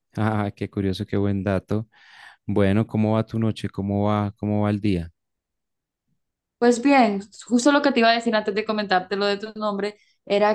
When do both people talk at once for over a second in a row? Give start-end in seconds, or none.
none